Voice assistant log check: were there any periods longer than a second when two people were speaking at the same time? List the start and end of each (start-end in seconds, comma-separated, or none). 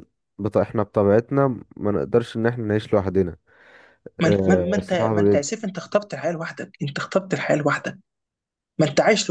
4.2-5.5